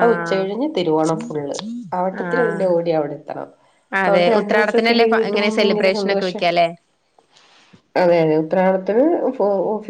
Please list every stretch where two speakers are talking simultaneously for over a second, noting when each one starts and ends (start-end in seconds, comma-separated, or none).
4.0-6.4